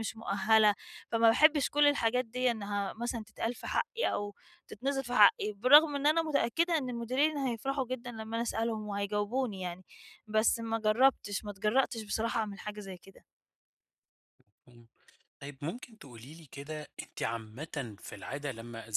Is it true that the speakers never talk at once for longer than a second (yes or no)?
yes